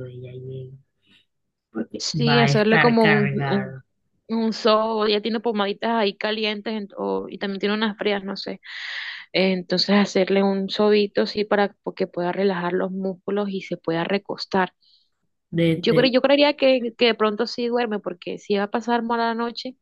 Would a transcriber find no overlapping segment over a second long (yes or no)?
no